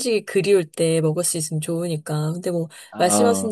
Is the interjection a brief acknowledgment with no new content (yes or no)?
yes